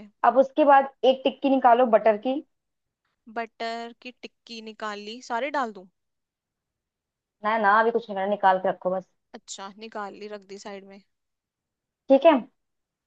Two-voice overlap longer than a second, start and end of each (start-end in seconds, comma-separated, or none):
none